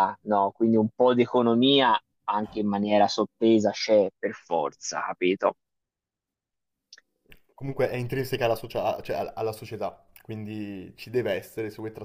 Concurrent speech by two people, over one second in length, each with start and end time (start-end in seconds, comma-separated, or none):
none